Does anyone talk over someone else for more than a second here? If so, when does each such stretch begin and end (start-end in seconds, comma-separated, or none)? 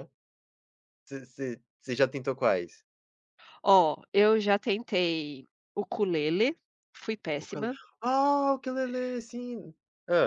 none